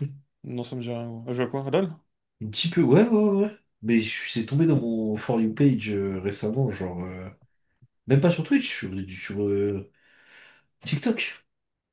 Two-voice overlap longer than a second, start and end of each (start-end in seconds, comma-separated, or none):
none